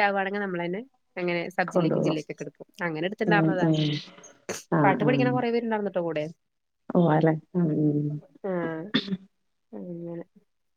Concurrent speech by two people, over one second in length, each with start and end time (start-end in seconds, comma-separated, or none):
none